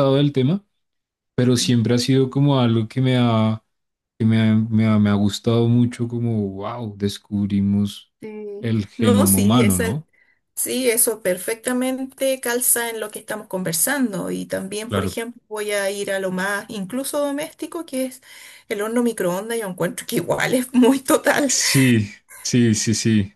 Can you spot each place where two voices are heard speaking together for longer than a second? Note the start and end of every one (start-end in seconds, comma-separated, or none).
8.6-10.0